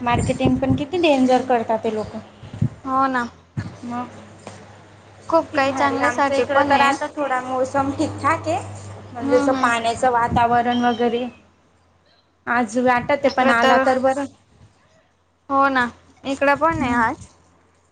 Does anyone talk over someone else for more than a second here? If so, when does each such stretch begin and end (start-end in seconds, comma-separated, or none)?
5.4-6.9